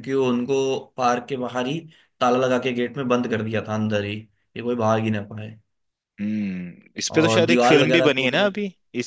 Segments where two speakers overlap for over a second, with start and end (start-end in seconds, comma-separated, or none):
7.1-8.5